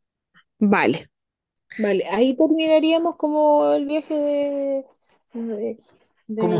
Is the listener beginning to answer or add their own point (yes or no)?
yes